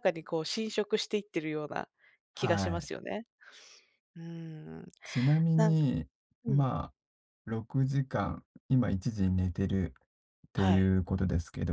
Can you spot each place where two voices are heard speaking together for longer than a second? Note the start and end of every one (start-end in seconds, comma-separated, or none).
none